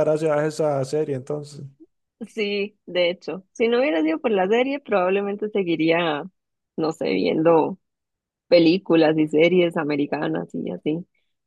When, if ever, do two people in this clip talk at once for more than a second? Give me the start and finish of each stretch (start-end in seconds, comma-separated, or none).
none